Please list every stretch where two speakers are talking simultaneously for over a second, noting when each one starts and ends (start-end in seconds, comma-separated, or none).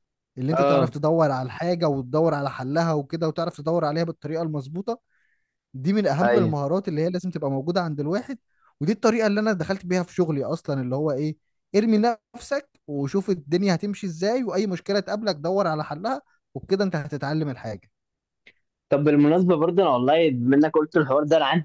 none